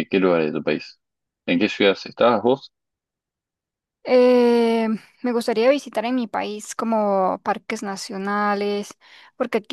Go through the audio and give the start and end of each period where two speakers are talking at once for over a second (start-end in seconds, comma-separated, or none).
none